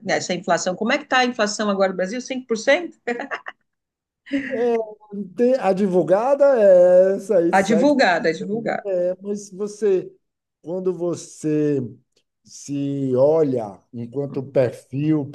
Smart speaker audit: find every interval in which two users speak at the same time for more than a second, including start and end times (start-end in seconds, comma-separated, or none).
7.5-8.8